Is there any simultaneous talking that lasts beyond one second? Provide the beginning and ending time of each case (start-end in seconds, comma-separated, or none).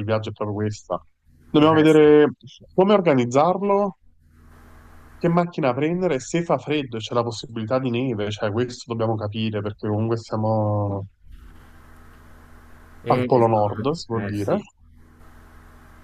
13.1-14.6